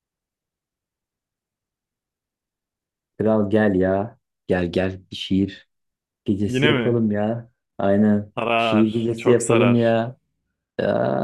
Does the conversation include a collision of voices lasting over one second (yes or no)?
yes